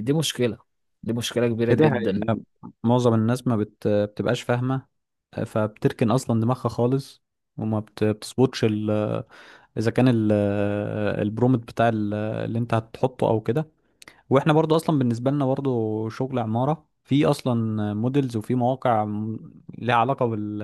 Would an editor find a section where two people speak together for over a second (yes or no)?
no